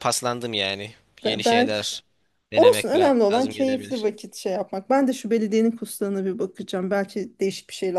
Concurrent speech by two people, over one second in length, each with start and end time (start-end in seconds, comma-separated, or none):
2.6-4.1